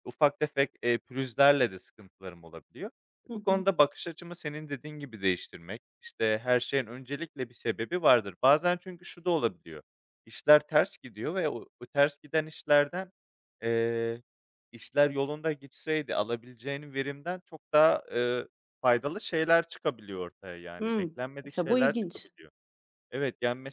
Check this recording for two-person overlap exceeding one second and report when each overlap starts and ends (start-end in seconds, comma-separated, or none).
20.8-22.3